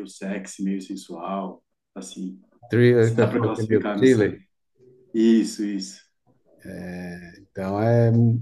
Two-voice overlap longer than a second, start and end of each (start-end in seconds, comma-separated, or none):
3.0-4.3